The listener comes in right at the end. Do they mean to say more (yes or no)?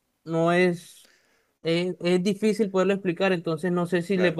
no